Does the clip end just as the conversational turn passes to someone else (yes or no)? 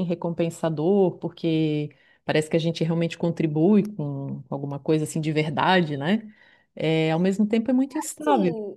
yes